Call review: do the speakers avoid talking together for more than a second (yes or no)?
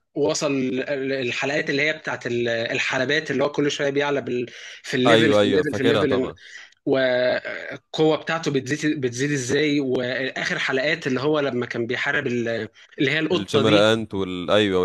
no